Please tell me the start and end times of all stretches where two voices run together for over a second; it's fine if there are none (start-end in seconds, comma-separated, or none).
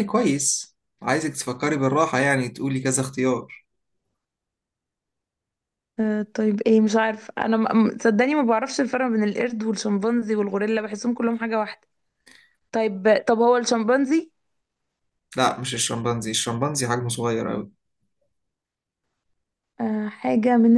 none